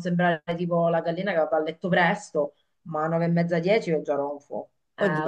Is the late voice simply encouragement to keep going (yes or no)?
no